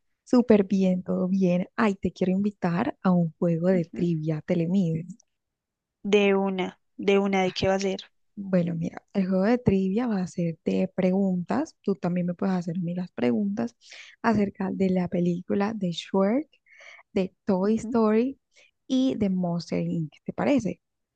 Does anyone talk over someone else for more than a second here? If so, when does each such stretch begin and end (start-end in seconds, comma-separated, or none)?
none